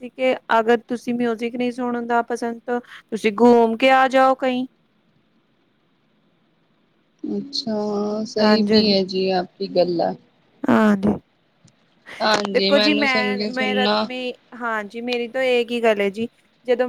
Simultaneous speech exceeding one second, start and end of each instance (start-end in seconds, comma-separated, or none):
12.5-14.0